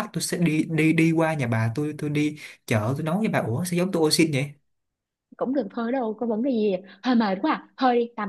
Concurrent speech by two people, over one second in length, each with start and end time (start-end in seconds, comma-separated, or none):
none